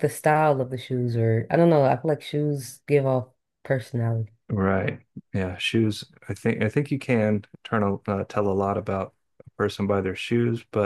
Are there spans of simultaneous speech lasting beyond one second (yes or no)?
no